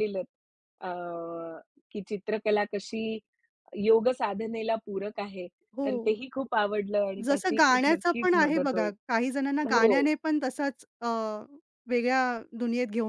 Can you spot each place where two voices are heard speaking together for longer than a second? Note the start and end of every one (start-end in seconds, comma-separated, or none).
7.2-8.9